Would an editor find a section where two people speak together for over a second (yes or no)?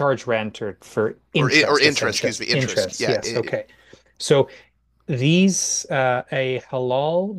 yes